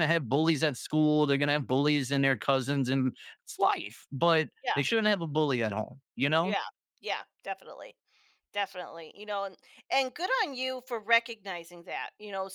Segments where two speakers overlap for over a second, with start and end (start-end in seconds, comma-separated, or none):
none